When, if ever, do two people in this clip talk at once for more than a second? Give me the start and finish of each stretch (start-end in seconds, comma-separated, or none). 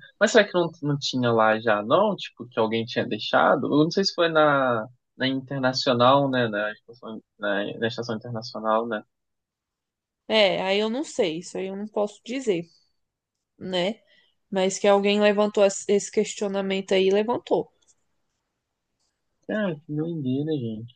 none